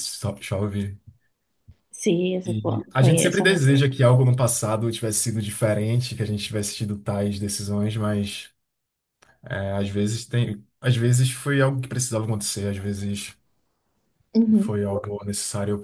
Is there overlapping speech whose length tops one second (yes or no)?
yes